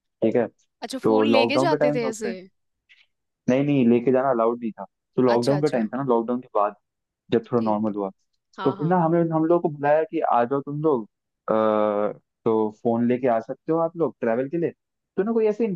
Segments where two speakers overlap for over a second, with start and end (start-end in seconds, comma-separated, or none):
1.0-2.3